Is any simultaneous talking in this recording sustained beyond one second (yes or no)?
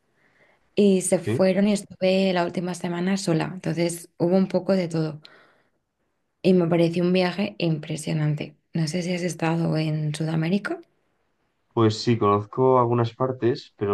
no